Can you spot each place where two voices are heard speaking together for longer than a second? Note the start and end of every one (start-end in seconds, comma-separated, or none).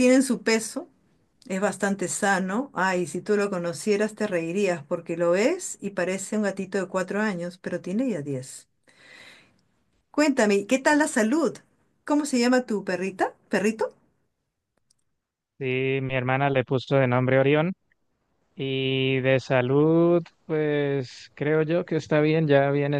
none